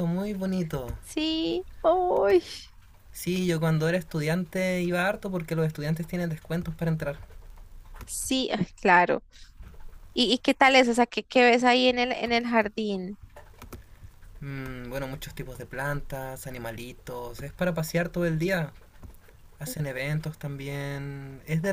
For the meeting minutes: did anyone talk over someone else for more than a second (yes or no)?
no